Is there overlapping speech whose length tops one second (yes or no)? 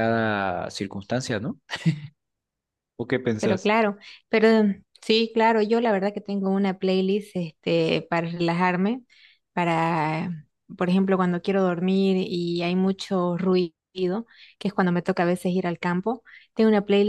no